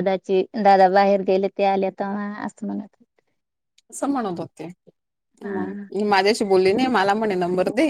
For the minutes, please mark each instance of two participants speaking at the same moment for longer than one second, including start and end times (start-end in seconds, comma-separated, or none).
none